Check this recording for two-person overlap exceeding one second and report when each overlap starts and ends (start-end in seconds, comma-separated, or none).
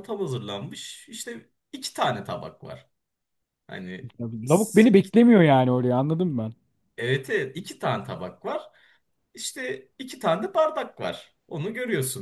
none